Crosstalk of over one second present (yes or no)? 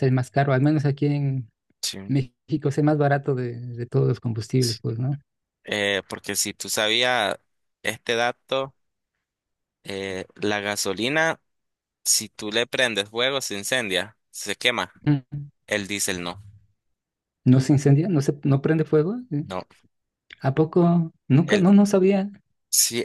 no